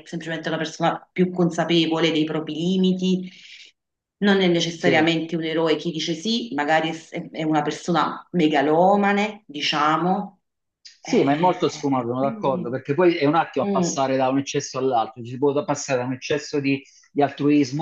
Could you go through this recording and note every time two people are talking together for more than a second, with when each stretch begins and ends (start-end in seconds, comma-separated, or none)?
11.0-12.7